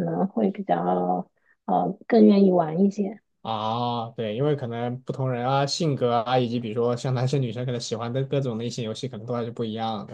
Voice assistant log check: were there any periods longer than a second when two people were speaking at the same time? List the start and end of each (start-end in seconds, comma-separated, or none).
none